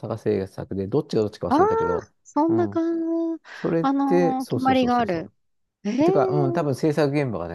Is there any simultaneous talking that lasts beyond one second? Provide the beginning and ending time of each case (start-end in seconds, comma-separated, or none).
3.8-5.3